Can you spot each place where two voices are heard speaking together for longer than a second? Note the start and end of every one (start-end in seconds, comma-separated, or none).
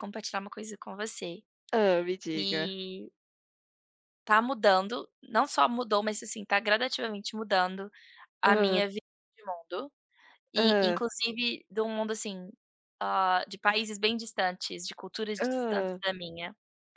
none